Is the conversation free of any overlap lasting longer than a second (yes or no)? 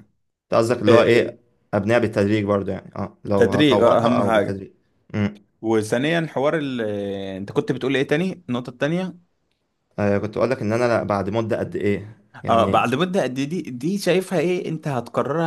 no